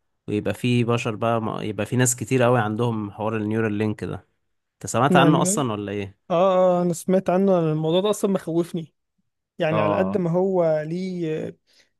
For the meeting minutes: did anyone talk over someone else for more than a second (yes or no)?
no